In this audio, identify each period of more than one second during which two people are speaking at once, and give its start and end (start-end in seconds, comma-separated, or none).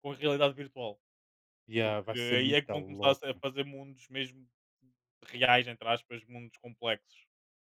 1.8-3.4